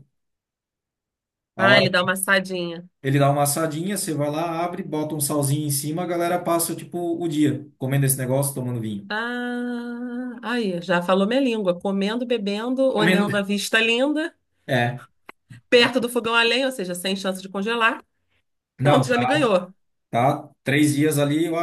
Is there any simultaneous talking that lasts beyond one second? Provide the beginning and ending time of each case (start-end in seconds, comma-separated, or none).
none